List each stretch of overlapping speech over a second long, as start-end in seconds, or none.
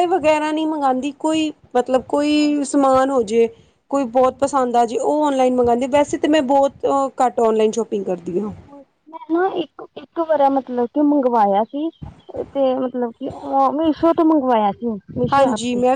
none